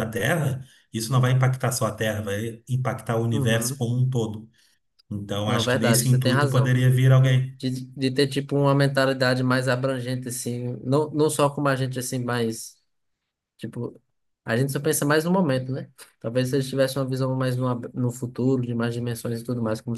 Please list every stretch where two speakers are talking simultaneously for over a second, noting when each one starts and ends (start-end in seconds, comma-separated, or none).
5.4-6.7